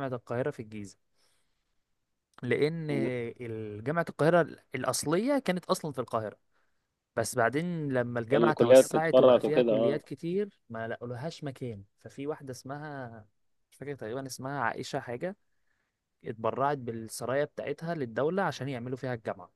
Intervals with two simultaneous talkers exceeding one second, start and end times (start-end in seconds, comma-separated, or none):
8.3-10.0